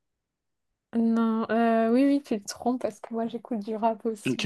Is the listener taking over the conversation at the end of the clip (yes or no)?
yes